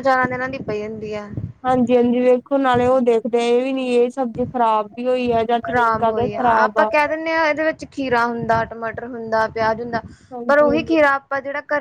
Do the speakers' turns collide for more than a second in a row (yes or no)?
no